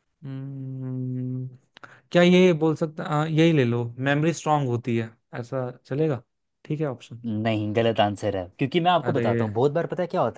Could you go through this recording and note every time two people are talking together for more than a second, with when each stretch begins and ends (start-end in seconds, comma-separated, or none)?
none